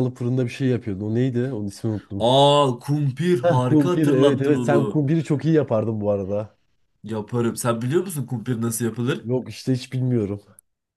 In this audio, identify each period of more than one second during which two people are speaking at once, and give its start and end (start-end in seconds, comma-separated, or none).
3.4-5.0